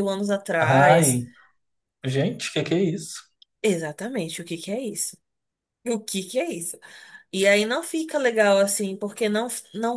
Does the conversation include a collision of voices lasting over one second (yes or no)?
no